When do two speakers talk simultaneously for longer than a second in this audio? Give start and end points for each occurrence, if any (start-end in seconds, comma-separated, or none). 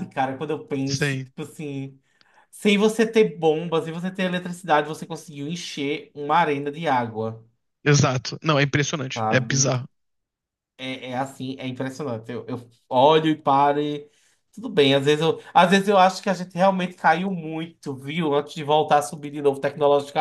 none